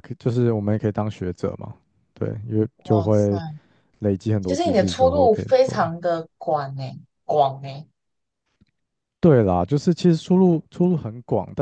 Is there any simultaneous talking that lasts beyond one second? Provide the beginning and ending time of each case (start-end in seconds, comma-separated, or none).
4.4-5.9